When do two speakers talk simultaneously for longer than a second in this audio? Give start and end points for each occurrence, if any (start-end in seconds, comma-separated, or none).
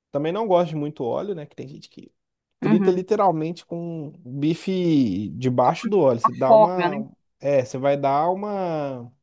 5.7-7.0